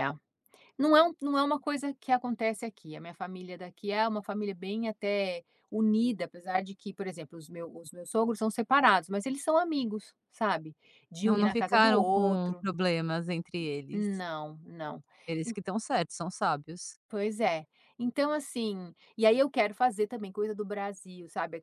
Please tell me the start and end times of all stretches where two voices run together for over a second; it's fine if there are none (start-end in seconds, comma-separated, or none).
11.2-12.7